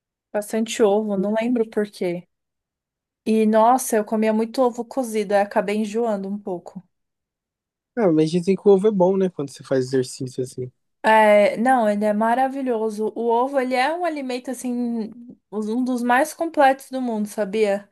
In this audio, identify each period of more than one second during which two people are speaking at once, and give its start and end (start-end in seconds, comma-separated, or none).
none